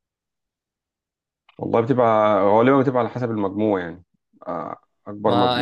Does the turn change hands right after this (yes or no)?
yes